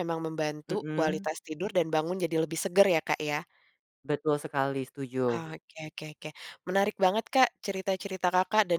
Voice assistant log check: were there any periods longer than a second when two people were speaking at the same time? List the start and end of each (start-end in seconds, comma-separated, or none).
none